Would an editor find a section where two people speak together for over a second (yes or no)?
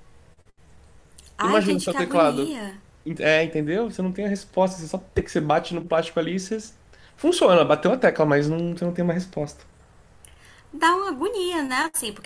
yes